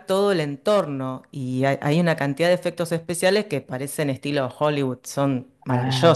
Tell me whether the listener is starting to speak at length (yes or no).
yes